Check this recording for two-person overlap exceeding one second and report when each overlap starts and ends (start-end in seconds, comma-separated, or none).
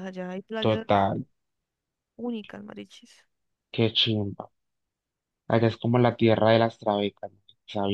none